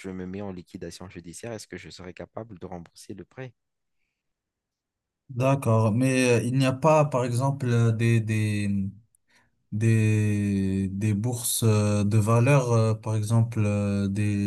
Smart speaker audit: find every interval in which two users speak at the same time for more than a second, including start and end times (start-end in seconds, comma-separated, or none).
none